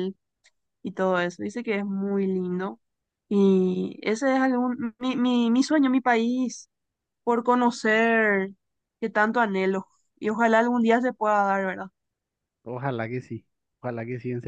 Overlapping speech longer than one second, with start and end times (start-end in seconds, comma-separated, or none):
none